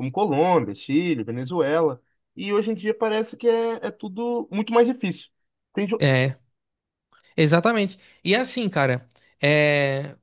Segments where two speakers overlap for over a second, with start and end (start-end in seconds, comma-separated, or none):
none